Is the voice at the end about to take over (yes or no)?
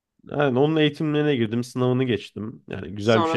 yes